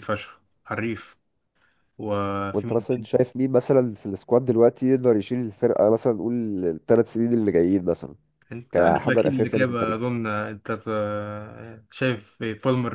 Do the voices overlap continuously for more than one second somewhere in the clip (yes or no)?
yes